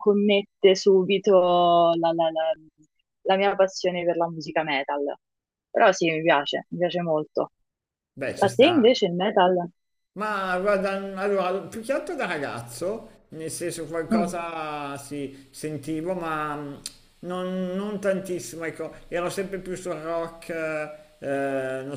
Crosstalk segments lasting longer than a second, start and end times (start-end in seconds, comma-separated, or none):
none